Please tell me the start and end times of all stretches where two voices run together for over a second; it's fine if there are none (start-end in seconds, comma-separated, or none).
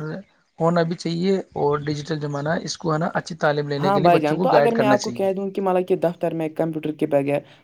3.8-5.3